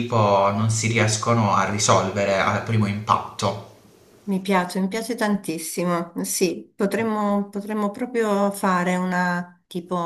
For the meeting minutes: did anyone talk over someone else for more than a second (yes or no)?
no